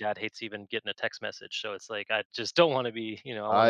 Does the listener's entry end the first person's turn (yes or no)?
yes